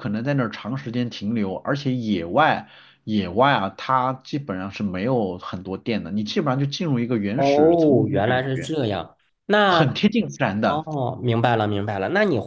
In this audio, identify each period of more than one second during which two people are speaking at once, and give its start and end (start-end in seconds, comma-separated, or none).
7.3-8.7